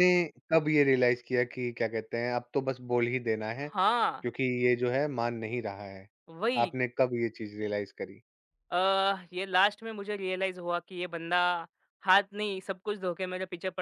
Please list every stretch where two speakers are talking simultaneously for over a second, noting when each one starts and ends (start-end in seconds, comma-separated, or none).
none